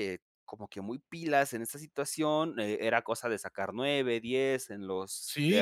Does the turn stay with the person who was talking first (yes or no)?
no